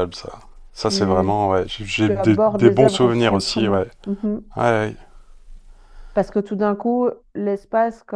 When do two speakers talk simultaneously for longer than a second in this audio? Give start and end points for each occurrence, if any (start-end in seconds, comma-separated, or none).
2.1-3.9